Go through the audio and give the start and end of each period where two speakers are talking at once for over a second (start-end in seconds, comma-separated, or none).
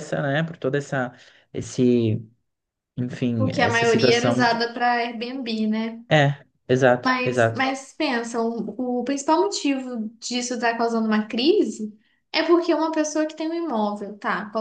3.3-4.7